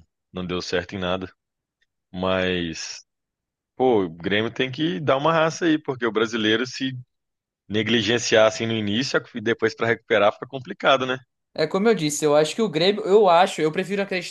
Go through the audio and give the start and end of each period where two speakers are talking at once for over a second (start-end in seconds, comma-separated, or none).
none